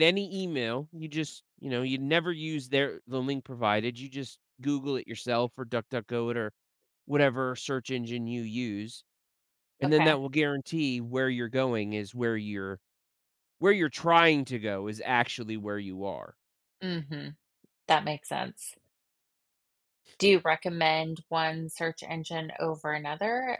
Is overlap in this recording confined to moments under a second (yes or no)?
yes